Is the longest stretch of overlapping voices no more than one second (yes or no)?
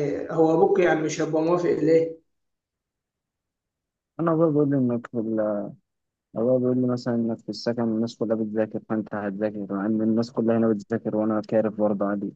yes